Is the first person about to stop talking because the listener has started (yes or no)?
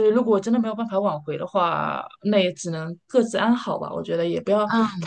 no